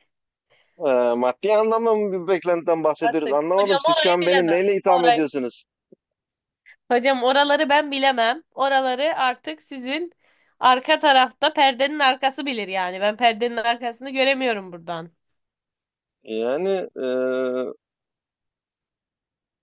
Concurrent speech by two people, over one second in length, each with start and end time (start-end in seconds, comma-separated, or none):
3.0-5.2